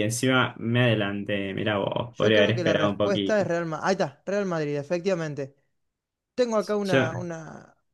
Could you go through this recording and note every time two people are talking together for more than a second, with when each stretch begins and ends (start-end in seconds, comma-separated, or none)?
2.1-3.5